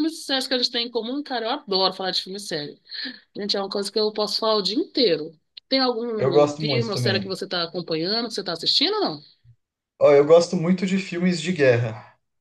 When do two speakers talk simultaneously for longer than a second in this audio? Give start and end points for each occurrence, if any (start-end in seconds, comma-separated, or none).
6.2-7.4